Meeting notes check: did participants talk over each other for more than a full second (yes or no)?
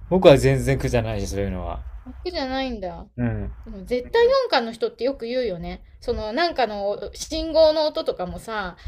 no